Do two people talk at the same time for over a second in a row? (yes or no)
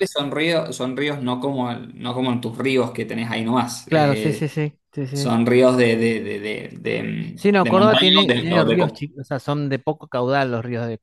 yes